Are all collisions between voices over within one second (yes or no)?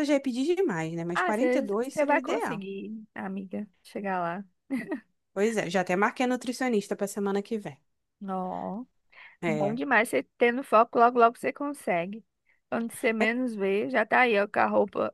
no